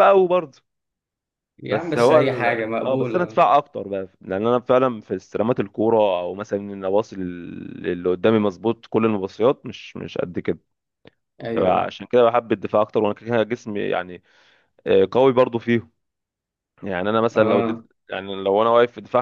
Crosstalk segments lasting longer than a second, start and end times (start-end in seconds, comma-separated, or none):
1.7-3.4